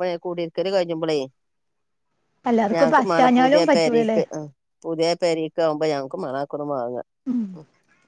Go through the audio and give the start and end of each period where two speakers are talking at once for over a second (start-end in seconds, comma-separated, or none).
2.7-4.2